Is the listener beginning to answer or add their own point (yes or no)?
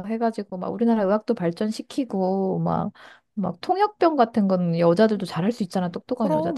no